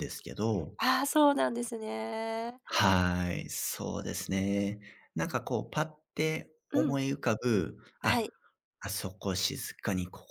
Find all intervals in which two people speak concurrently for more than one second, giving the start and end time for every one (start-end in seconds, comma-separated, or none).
none